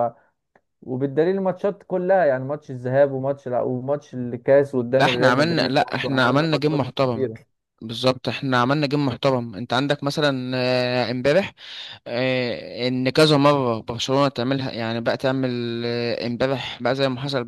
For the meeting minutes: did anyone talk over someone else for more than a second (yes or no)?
yes